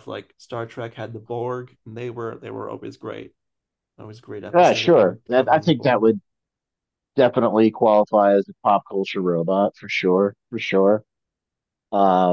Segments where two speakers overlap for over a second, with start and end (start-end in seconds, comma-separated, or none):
4.5-6.0